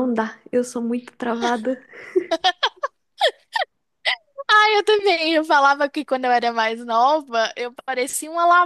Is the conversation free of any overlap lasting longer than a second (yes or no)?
yes